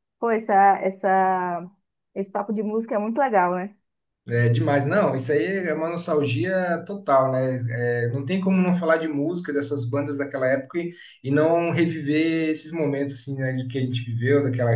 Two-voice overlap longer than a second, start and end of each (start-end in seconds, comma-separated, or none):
none